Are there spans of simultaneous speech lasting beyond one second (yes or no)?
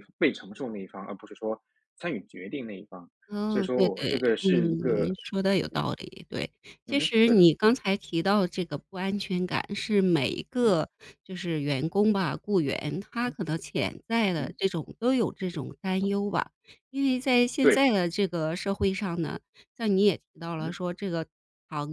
yes